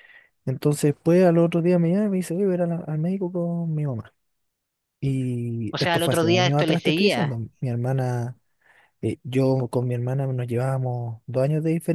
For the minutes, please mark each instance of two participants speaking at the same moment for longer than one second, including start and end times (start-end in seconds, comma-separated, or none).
5.7-7.3